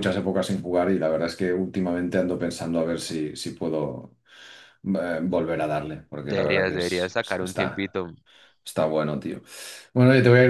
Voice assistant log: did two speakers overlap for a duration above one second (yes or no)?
yes